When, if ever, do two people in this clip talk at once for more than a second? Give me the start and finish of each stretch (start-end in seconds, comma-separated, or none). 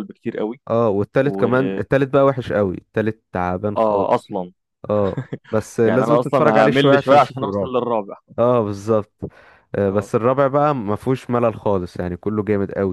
5.8-7.7